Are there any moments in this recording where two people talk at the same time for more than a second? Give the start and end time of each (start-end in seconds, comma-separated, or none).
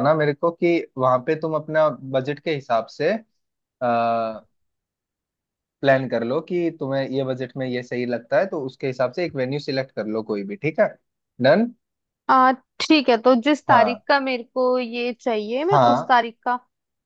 none